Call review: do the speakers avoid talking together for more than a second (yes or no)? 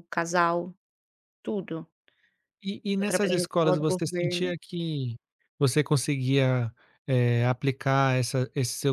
no